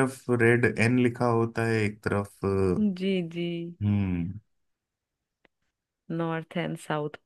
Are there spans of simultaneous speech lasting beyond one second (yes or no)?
no